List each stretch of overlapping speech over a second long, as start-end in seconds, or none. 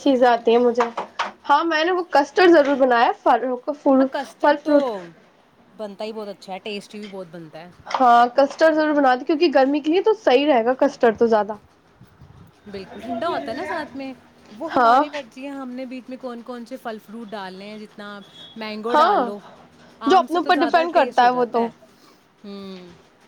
20.1-21.6